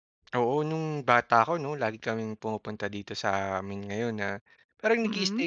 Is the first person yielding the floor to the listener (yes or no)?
no